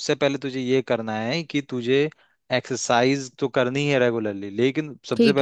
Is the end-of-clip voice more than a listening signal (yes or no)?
no